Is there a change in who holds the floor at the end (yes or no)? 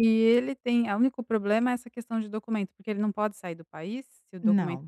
yes